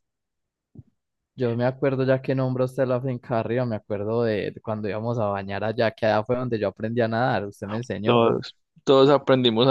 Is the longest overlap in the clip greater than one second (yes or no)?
no